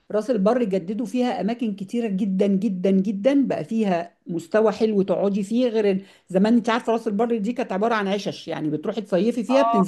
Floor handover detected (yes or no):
yes